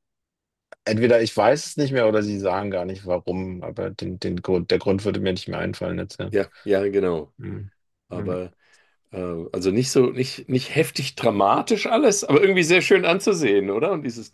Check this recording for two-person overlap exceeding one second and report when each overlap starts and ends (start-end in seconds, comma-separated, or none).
none